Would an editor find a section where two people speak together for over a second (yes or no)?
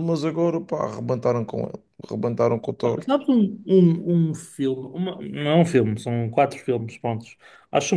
no